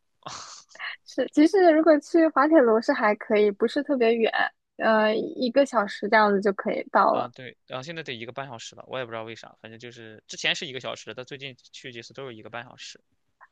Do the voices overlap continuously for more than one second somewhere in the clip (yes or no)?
no